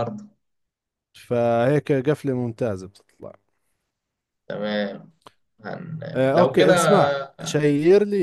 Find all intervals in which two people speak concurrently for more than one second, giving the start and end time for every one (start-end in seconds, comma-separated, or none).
none